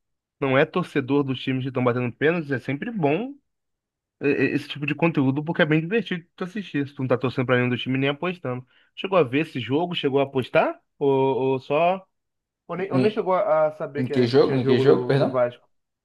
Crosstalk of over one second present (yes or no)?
yes